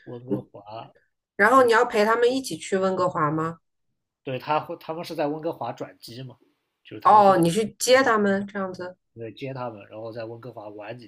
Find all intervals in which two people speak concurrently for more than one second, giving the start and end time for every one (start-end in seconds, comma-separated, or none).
none